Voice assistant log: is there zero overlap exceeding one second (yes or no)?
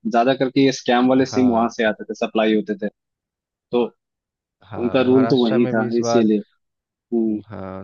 no